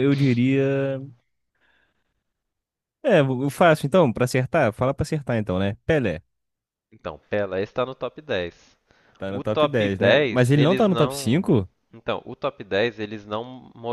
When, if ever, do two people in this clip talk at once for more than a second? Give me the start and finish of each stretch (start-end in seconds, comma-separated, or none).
9.3-11.4